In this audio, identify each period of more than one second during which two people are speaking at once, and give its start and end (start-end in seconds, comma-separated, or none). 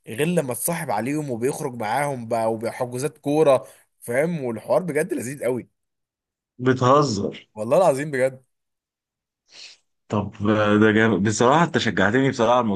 none